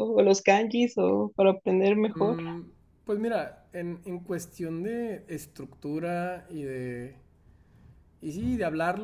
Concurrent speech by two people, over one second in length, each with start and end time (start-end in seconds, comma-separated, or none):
none